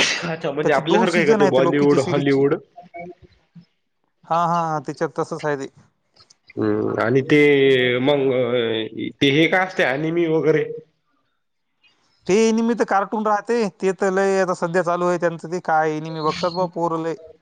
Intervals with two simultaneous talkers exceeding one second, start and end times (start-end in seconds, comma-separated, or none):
0.6-2.4